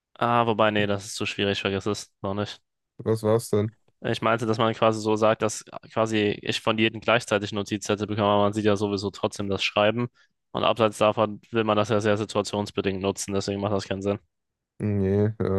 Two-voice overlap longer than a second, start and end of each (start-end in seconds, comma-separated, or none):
none